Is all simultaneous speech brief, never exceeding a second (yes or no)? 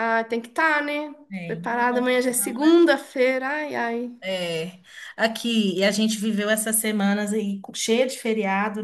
no